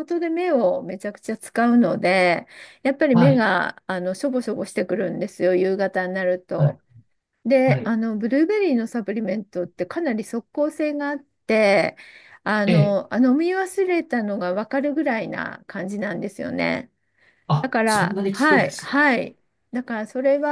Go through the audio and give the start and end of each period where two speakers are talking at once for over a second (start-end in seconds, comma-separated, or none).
17.6-19.1